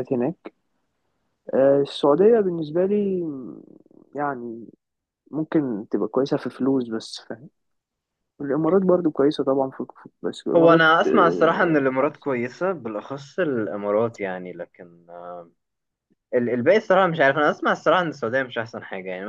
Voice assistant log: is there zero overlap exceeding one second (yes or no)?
no